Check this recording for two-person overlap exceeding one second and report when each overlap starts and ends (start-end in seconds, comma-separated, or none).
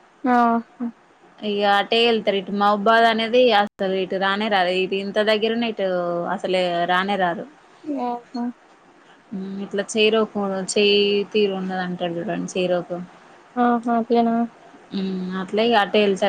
none